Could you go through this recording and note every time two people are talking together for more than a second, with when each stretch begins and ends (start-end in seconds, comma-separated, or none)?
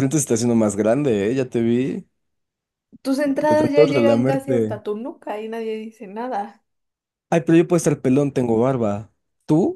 3.5-4.8